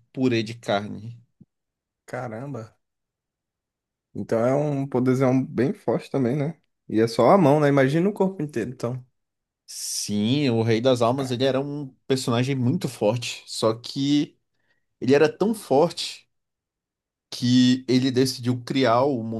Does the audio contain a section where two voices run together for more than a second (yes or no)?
no